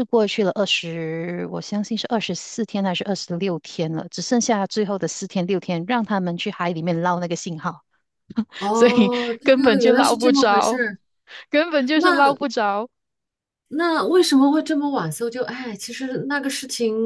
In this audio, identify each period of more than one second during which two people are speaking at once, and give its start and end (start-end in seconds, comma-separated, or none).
9.4-10.8